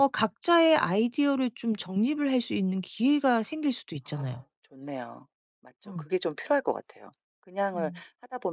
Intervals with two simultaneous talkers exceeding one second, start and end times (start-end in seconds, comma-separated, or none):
none